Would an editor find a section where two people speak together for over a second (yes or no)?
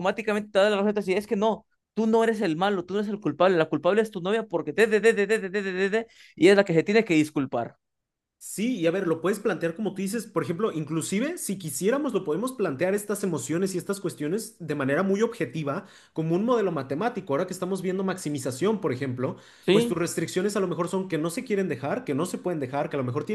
no